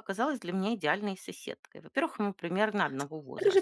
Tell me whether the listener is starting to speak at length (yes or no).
yes